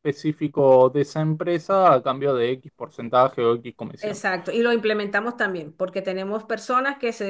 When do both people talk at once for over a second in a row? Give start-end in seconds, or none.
none